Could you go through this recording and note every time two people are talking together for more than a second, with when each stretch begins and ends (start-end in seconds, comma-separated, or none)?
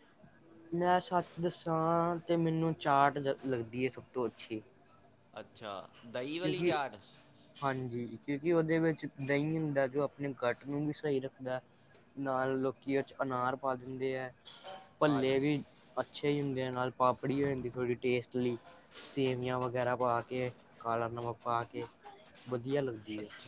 none